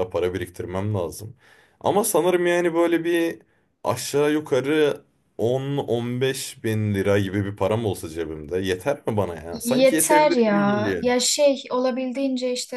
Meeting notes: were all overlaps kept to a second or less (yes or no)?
no